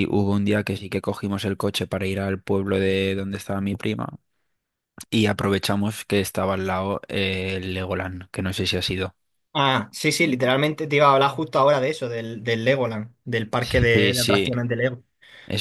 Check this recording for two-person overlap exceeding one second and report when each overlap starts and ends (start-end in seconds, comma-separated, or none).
none